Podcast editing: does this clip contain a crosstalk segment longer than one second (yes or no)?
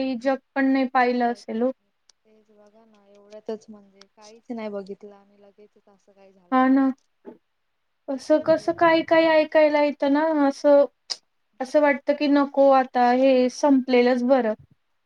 yes